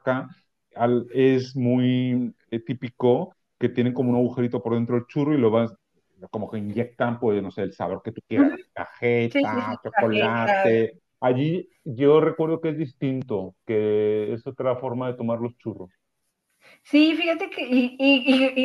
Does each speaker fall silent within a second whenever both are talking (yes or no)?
no